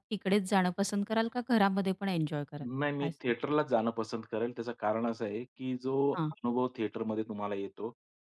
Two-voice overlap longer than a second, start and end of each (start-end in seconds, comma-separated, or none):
none